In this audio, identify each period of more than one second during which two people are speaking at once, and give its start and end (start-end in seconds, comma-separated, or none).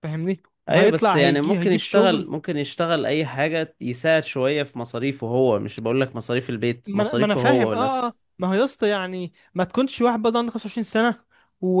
0.7-2.3, 6.9-8.2